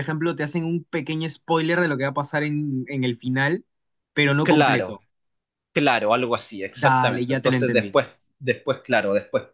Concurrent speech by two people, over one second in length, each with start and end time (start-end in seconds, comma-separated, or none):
6.7-8.0